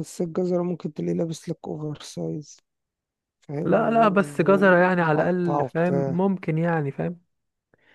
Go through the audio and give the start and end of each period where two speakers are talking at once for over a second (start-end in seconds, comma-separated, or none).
3.6-6.2